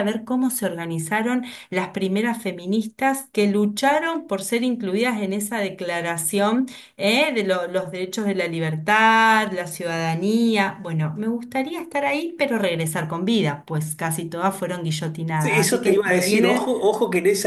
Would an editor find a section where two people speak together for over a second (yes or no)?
yes